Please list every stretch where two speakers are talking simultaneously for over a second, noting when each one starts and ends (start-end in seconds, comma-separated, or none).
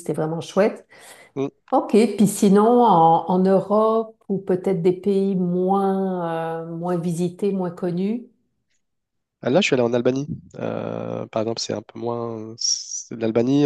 none